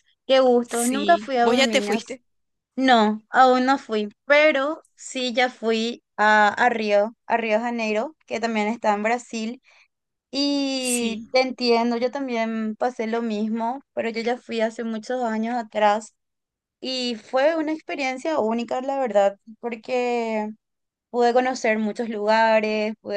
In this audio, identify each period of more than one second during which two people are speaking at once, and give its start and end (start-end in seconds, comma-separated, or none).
0.7-2.0